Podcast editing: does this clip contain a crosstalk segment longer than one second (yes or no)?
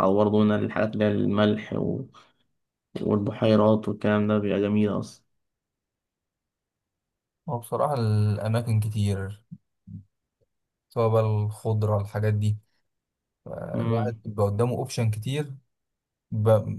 no